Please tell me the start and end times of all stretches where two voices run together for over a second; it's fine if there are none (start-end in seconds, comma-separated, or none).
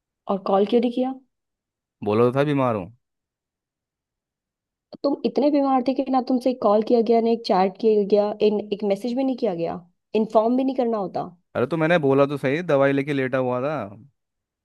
none